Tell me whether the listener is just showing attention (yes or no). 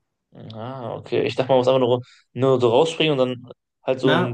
no